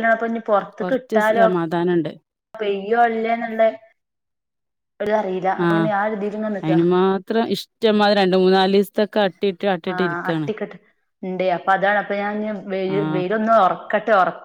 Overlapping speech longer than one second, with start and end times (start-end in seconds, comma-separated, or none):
none